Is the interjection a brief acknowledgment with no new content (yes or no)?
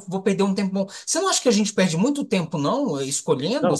no